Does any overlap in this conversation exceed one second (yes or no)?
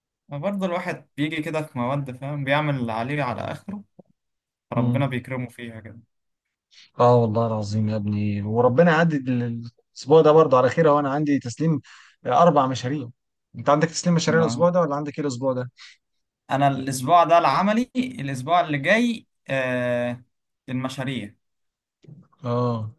no